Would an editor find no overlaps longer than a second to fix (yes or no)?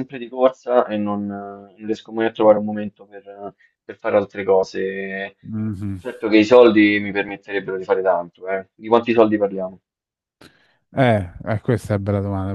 yes